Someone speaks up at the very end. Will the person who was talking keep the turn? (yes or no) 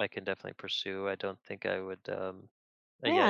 no